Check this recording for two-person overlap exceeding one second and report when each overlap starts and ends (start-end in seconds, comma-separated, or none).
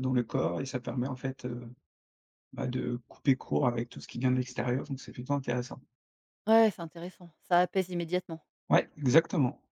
none